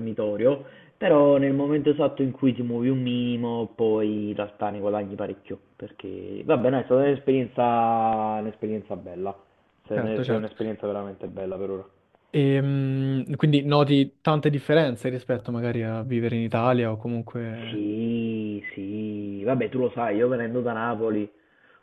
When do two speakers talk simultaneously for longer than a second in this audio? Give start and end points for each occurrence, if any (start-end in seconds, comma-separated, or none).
none